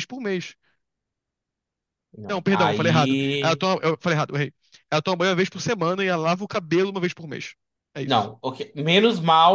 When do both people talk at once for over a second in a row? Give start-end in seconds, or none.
2.3-3.6